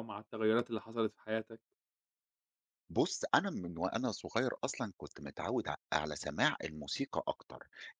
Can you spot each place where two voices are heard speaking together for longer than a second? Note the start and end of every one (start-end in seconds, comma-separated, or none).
none